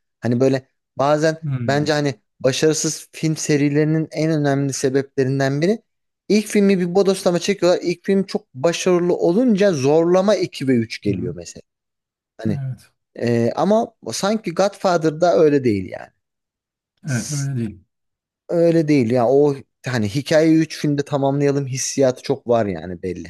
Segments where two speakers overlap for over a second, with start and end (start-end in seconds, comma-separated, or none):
none